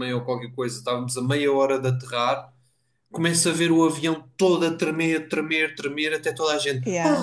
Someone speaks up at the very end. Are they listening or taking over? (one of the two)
listening